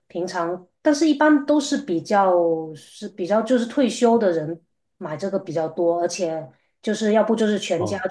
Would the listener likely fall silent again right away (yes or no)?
yes